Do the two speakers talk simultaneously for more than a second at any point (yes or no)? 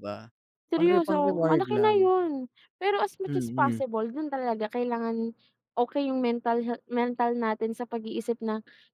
yes